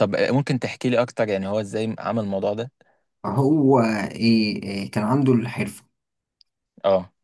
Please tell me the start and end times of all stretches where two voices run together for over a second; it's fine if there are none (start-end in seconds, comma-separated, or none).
none